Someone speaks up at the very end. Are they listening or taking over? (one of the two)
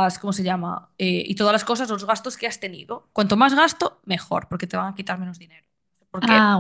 listening